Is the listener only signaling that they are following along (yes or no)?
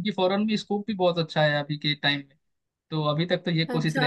no